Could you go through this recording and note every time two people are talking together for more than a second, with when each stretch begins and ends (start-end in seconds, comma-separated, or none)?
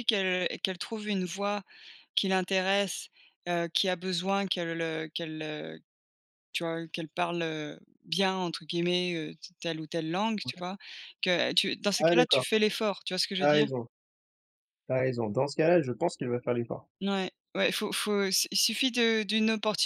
none